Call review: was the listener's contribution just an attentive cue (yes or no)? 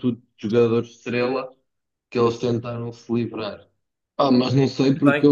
yes